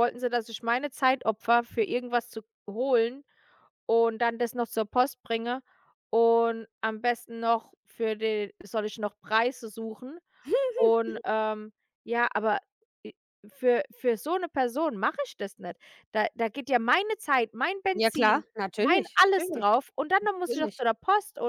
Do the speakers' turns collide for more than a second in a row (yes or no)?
yes